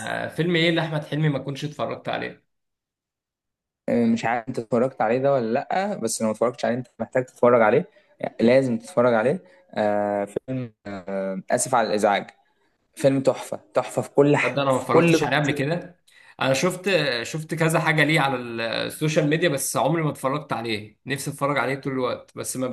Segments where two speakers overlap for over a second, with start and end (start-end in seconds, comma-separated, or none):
14.4-15.7